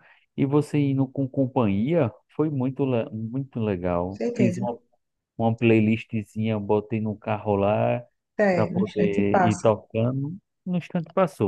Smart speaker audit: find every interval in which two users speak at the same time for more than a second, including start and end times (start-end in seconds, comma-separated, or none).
8.5-9.7